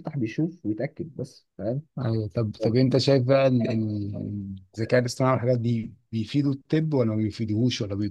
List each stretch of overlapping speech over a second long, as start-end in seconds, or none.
none